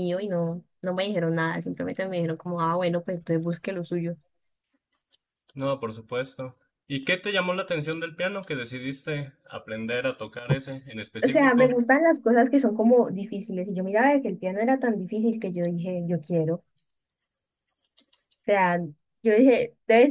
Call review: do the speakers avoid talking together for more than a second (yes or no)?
yes